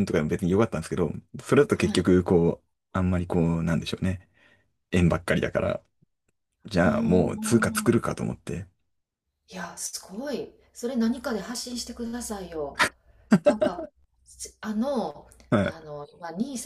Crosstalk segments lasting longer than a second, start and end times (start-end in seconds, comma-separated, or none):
6.8-8.0